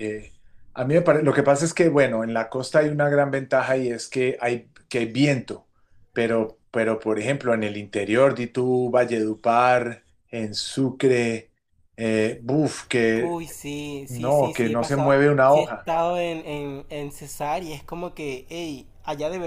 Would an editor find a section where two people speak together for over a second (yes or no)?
yes